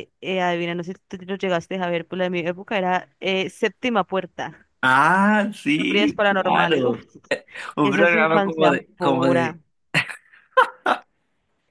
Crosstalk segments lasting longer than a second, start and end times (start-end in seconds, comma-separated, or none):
5.8-7.0, 7.8-9.6